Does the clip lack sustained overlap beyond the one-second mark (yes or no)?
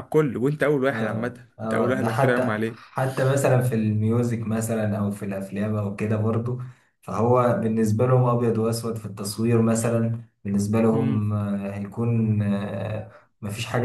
no